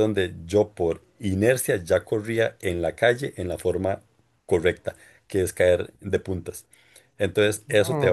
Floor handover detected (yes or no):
no